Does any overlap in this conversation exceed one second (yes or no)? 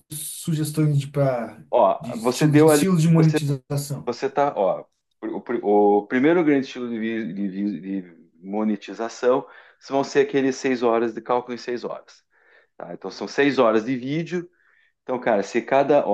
yes